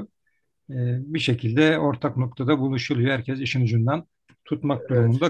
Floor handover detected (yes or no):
no